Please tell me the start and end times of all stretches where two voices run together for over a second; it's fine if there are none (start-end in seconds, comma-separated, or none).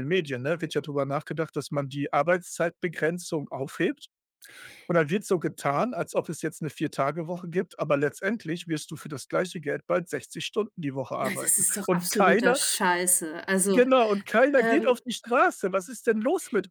11.2-12.6